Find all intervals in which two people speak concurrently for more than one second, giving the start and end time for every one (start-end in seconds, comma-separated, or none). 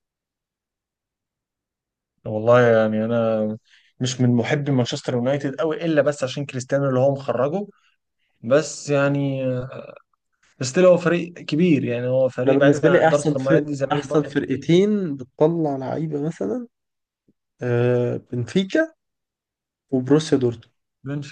12.4-14.8